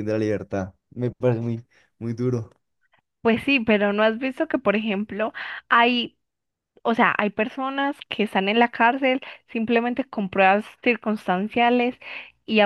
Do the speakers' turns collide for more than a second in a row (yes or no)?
no